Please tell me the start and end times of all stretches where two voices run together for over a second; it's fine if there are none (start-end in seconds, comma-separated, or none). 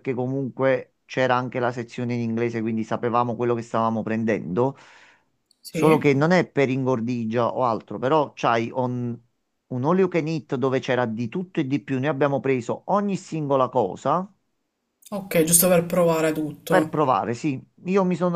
none